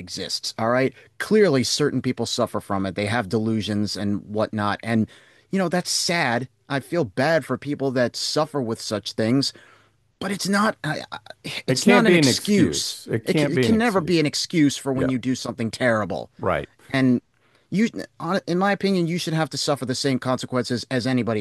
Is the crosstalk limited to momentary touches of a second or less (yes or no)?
no